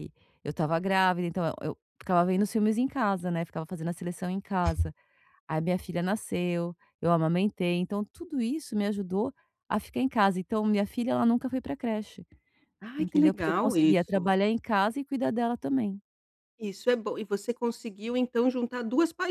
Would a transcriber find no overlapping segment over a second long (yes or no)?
no